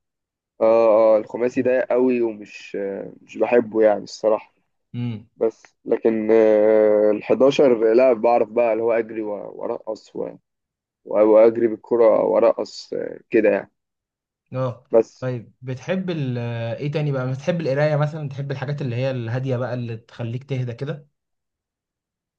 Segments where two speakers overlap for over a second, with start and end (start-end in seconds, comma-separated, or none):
none